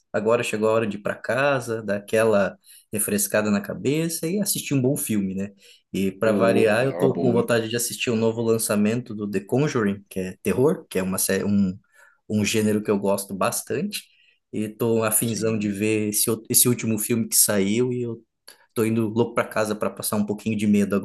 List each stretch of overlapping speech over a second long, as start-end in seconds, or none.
6.2-7.5